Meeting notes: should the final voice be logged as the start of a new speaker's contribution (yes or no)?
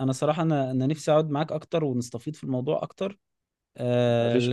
no